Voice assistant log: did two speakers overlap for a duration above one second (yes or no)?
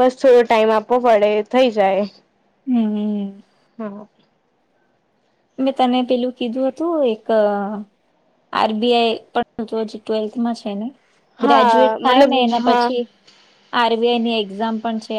yes